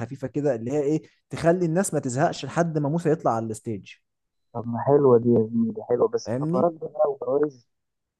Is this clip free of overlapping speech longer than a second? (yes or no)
yes